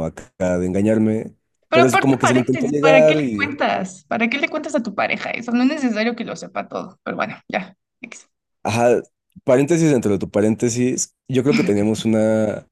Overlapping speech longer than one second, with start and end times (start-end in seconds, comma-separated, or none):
1.7-3.5